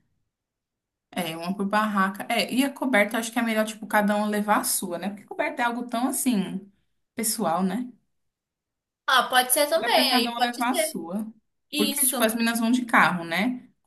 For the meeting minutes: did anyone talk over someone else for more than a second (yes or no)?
yes